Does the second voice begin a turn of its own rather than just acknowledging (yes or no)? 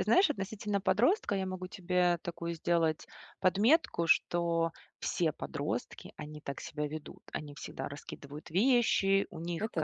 no